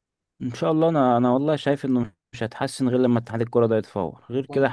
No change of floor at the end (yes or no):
no